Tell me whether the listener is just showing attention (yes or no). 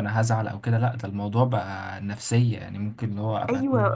no